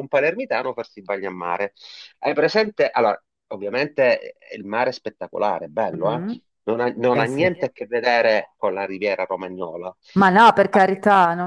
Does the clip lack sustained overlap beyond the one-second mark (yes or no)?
yes